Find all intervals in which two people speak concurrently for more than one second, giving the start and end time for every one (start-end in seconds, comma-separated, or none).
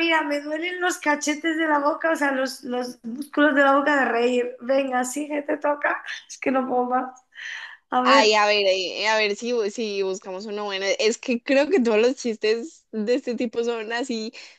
none